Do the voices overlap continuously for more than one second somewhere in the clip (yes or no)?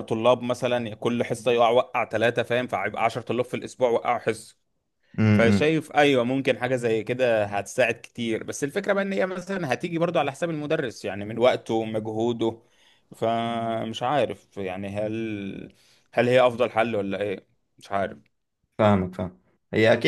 no